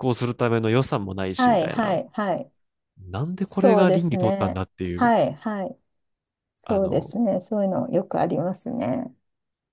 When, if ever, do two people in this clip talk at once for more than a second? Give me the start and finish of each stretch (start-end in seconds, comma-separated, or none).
3.5-5.1